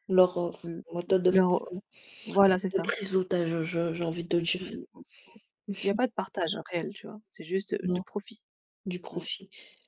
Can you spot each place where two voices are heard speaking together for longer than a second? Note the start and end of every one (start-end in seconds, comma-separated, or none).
none